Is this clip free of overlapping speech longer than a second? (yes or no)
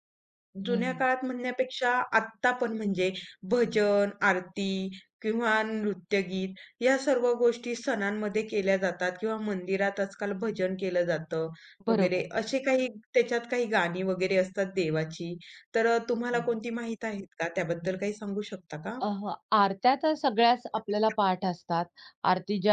yes